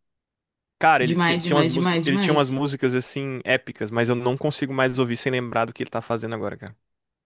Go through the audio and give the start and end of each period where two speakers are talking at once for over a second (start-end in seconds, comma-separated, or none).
1.0-2.6